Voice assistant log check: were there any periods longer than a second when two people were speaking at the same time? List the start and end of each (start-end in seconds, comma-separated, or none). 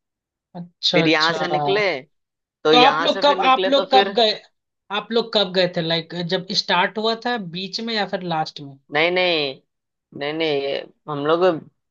2.7-4.2